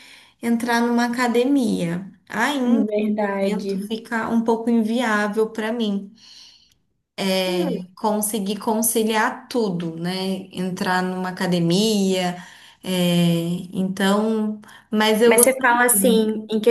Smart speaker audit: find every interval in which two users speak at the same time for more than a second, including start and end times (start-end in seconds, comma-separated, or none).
2.6-3.9